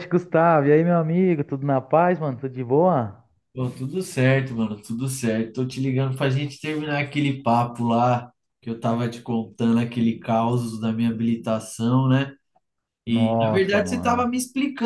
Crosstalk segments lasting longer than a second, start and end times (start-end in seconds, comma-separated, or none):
13.1-14.3